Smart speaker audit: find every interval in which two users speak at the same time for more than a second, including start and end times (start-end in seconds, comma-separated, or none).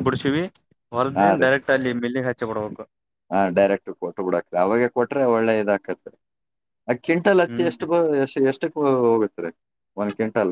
none